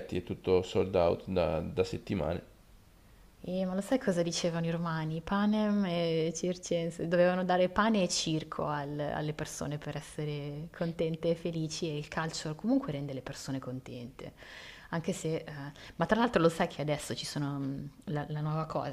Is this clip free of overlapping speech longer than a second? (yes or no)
yes